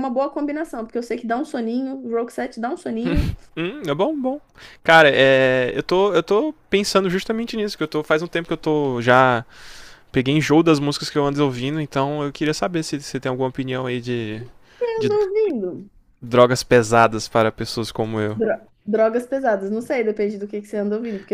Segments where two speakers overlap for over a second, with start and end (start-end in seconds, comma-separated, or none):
none